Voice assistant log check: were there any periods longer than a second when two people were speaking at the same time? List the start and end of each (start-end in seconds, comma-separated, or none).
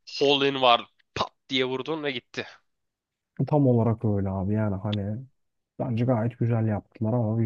none